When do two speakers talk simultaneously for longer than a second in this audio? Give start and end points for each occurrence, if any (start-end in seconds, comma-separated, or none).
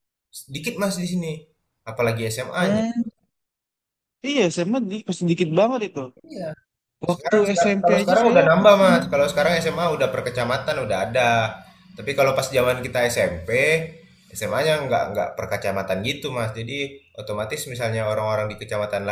7.1-8.9